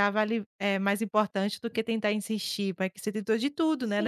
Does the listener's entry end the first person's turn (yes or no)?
yes